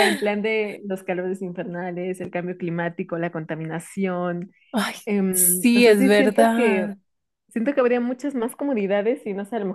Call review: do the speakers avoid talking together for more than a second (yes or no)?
no